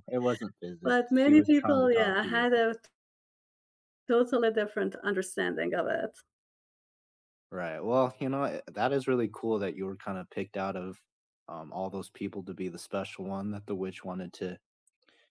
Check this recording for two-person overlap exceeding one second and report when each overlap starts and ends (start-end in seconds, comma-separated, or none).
0.8-2.5